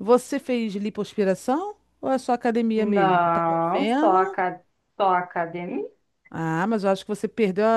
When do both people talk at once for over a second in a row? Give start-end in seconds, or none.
2.8-4.4